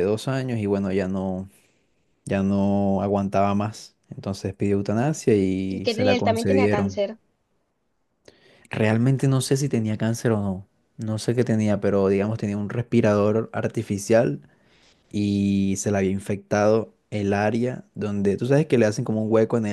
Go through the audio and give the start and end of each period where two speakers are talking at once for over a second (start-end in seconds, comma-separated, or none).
5.7-7.0